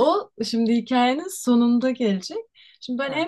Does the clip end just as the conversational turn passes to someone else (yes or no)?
no